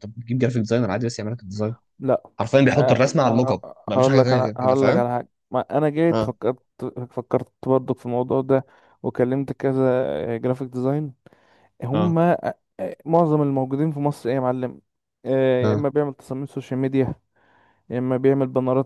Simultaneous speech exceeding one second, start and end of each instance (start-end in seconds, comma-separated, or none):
2.8-5.0